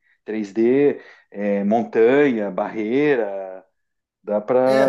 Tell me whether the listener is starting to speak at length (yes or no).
yes